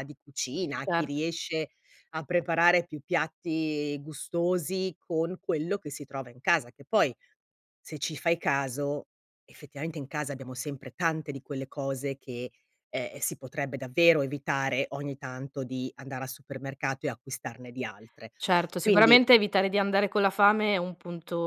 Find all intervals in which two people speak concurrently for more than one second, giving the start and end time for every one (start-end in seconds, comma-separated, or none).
none